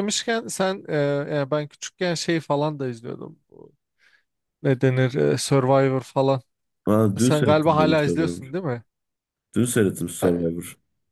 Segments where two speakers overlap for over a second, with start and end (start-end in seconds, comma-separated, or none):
7.2-8.5